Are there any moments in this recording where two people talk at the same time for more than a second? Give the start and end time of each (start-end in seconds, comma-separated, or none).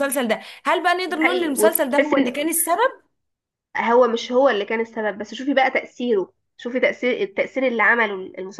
1.1-2.3